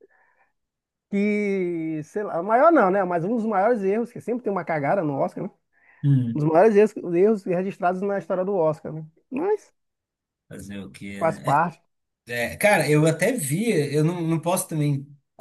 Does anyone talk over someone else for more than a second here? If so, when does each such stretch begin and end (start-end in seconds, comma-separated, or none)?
none